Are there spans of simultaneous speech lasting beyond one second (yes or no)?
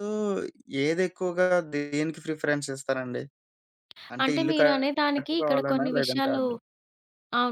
yes